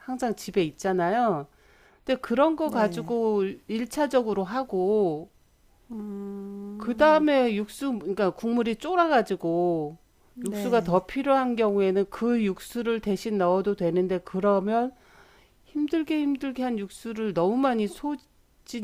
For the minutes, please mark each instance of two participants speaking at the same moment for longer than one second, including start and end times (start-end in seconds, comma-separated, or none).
none